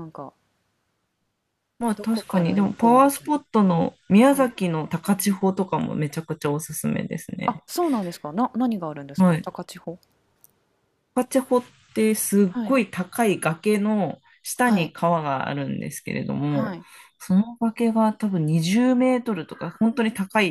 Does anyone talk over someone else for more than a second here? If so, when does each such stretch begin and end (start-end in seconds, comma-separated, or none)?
2.0-3.3